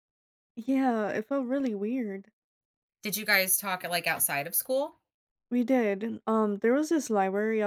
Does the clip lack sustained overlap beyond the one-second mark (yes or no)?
yes